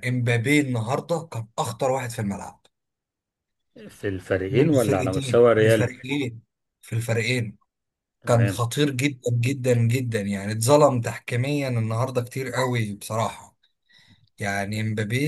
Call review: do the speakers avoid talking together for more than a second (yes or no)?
no